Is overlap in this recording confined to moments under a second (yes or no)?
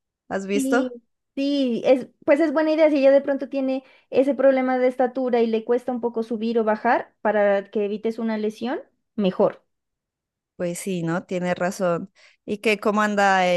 yes